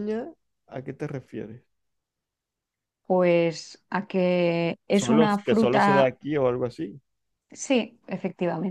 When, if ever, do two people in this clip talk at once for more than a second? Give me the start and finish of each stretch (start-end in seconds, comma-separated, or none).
4.9-6.1